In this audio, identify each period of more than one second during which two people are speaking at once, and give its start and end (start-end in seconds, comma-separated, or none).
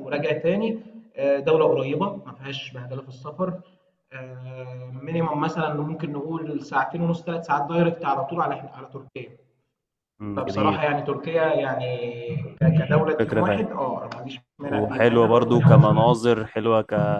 14.6-16.2